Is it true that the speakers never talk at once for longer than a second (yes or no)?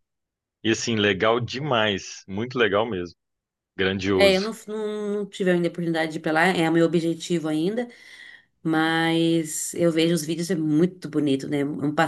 yes